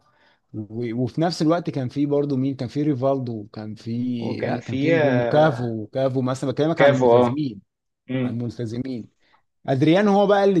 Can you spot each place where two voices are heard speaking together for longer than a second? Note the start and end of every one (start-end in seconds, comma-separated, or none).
4.4-5.7